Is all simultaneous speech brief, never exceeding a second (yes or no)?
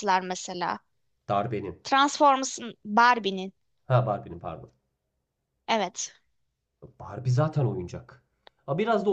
yes